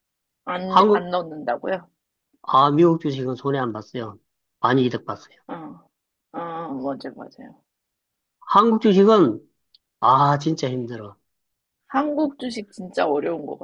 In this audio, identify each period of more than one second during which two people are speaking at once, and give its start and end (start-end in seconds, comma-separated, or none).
none